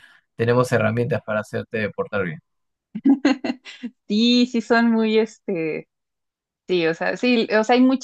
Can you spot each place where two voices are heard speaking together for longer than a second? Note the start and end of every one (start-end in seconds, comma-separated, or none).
none